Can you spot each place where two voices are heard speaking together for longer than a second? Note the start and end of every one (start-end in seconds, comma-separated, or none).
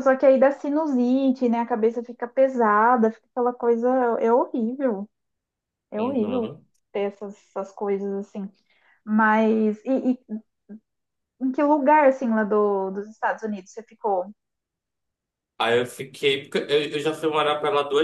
none